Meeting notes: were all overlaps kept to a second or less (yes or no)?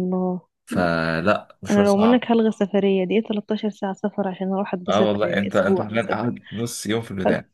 no